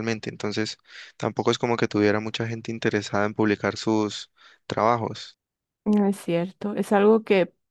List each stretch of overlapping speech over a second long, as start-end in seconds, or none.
none